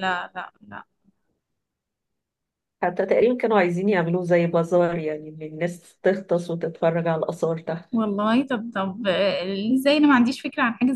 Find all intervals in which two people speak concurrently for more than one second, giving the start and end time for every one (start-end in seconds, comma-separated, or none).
none